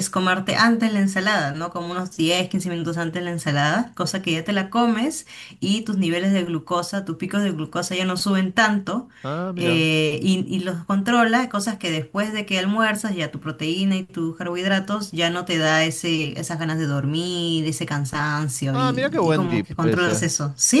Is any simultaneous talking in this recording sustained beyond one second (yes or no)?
yes